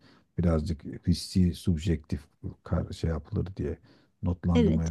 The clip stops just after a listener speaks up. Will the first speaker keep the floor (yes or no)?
yes